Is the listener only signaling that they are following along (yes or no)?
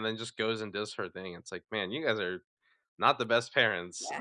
no